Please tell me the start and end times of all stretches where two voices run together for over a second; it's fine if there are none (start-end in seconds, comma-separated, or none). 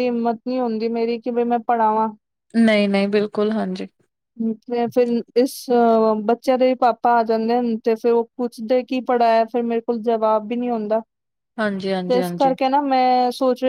none